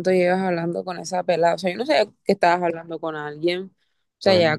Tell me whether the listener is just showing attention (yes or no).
yes